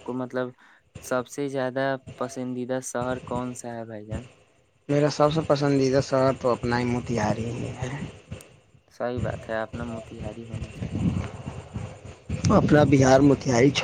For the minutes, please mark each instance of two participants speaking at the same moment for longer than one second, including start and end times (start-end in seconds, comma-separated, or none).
none